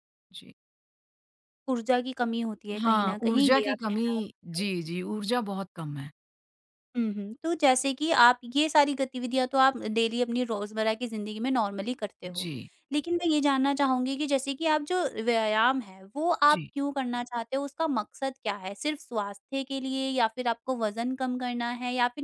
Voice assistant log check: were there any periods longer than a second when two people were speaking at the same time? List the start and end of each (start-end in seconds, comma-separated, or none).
2.8-4.7